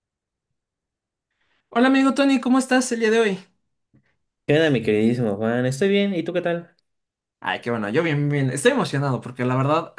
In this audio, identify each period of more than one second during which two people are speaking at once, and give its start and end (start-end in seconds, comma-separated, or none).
none